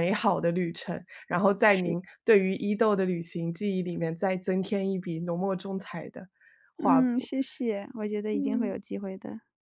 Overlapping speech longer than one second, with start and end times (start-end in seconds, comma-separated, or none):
none